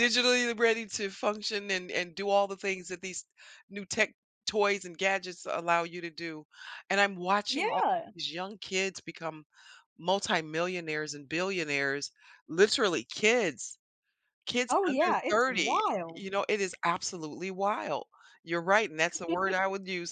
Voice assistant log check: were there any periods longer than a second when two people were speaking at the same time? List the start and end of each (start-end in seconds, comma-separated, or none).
14.7-16.3